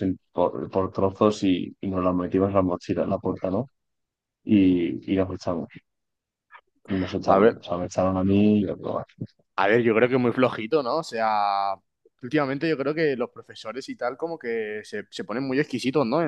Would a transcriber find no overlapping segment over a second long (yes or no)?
yes